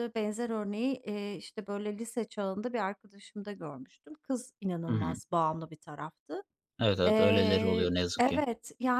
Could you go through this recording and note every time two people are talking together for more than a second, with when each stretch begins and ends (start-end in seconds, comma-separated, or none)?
7.0-8.4